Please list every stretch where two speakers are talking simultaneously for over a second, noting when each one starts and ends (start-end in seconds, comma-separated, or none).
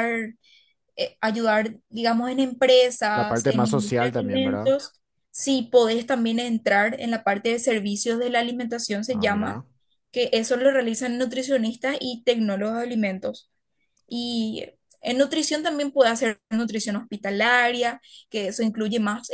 3.1-4.7